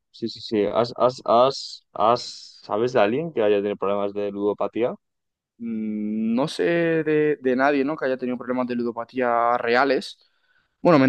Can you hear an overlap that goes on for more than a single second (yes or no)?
no